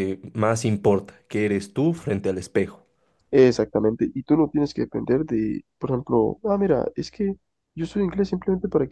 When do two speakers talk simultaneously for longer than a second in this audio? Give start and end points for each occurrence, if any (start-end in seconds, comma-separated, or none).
none